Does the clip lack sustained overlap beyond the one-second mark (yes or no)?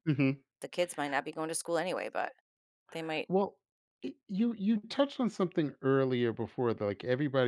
yes